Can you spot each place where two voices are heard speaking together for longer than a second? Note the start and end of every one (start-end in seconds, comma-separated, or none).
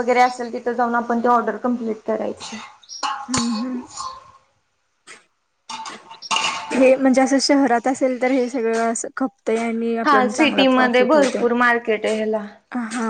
10.1-11.4